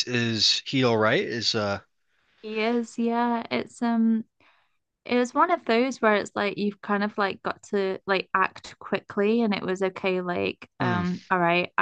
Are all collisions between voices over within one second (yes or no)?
yes